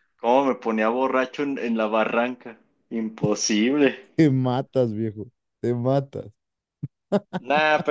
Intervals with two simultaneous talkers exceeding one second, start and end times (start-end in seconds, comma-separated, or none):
none